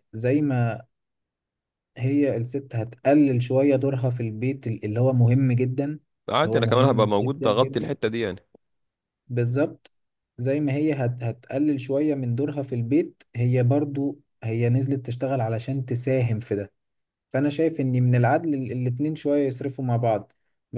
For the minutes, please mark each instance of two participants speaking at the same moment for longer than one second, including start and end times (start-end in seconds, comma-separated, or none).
6.4-7.9